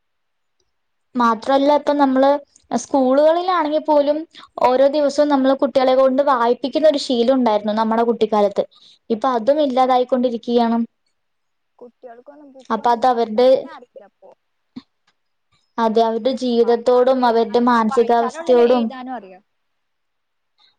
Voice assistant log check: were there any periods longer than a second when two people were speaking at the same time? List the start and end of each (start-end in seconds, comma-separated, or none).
17.3-18.8